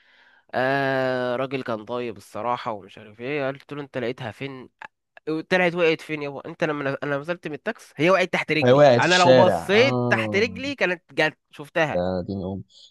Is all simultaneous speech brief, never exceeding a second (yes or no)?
no